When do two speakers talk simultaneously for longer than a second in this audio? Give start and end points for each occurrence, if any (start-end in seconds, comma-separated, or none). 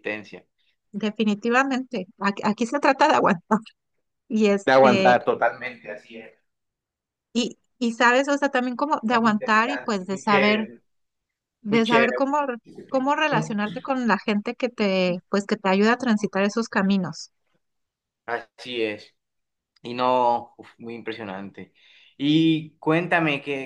9.1-10.7